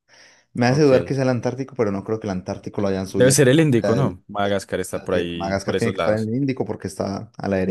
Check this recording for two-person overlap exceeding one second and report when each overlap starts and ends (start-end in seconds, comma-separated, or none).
3.1-6.3